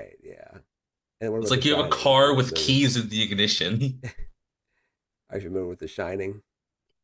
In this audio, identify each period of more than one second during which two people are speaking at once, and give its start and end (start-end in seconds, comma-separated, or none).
1.4-2.8